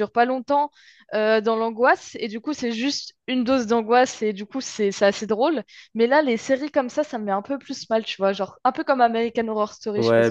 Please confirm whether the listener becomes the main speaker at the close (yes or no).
yes